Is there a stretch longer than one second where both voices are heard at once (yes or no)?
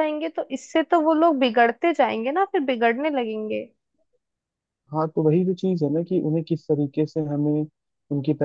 no